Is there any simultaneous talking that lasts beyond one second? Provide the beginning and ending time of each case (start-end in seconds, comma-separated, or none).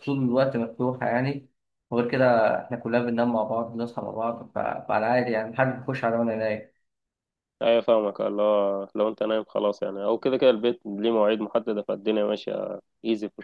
none